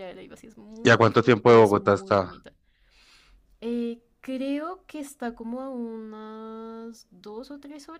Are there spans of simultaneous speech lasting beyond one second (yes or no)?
yes